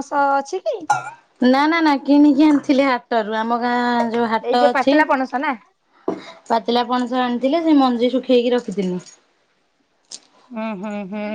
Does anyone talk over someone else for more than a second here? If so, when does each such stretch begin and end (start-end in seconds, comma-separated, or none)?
none